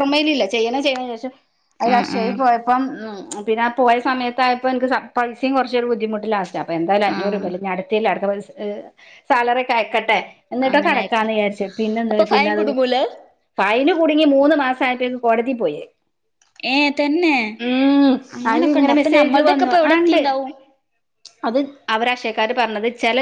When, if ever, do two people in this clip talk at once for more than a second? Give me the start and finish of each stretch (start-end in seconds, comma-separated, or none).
18.5-20.2